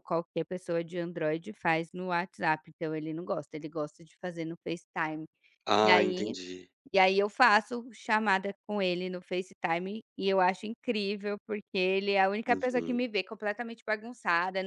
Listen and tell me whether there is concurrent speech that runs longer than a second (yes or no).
no